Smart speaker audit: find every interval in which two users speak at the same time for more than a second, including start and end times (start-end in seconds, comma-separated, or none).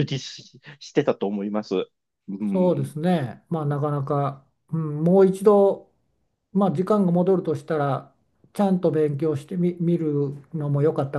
none